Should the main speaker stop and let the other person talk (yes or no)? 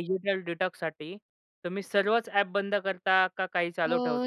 yes